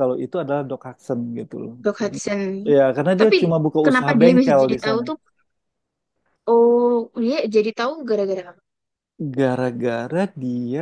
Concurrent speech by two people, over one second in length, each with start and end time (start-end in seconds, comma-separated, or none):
3.1-5.0